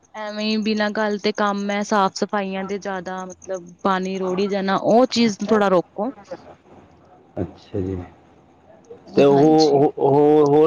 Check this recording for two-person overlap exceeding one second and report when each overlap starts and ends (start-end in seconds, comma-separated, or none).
none